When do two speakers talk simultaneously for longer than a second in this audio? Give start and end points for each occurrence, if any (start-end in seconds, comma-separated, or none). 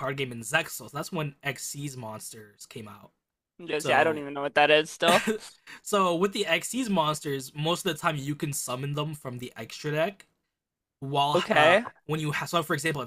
none